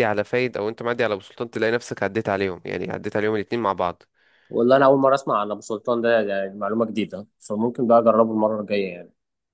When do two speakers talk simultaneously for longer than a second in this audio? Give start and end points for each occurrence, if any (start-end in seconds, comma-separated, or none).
none